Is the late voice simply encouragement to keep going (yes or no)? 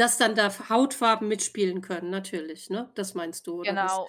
no